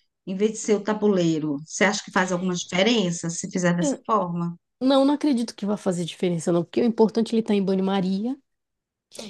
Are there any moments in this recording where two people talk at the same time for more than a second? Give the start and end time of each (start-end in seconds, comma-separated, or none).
none